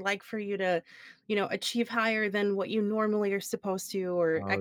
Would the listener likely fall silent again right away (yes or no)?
yes